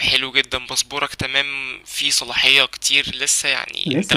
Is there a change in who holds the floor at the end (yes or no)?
no